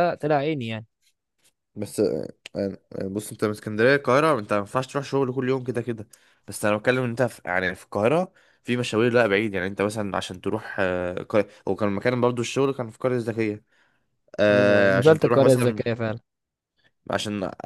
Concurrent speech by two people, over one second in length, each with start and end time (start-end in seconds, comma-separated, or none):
14.5-15.8